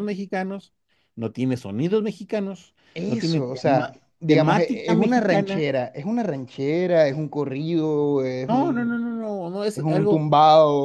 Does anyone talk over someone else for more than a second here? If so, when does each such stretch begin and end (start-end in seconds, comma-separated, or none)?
2.9-5.7